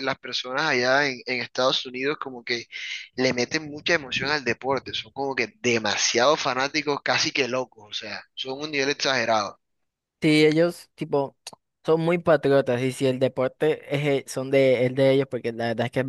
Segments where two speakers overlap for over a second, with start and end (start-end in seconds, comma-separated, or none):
none